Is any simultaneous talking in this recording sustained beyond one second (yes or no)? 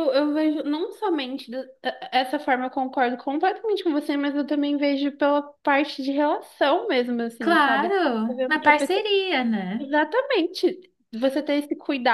yes